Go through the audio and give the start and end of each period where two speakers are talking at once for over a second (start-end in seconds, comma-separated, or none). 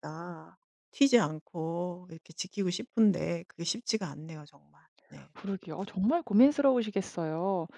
none